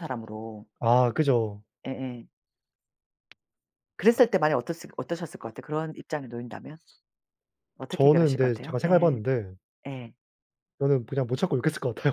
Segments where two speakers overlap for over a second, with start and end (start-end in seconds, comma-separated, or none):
7.9-9.2